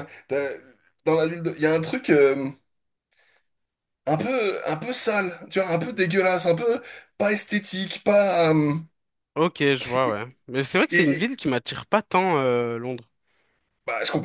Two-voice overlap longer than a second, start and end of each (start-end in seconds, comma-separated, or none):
none